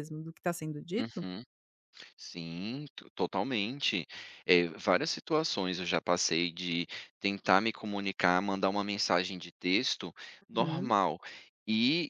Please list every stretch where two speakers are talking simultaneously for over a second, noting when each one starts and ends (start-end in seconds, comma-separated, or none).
none